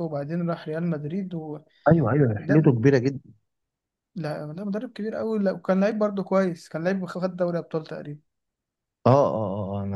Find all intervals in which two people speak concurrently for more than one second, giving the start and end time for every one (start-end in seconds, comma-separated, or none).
none